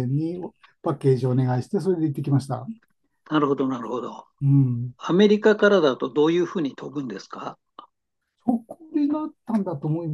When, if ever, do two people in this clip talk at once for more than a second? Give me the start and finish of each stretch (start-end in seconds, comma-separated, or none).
none